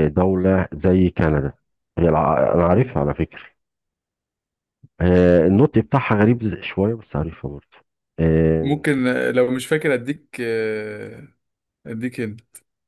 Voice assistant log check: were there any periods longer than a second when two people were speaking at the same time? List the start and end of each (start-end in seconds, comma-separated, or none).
none